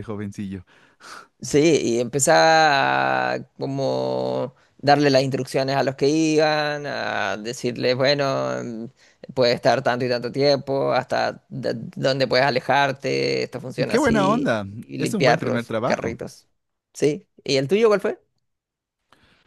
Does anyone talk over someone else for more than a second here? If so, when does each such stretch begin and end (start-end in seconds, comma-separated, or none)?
13.9-16.2